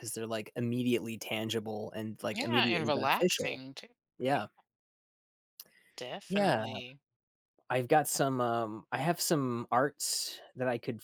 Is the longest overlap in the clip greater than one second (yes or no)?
yes